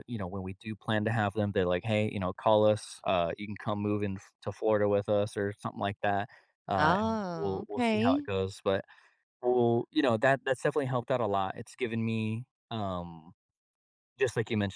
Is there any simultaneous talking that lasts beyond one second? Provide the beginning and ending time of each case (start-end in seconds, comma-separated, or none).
6.8-8.3